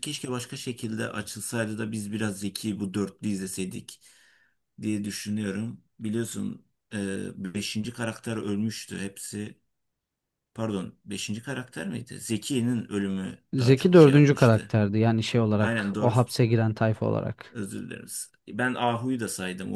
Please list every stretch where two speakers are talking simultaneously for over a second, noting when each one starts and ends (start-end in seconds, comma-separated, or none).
13.5-14.8